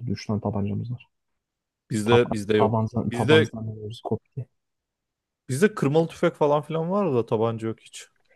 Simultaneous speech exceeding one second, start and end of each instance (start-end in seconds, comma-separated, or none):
2.0-3.5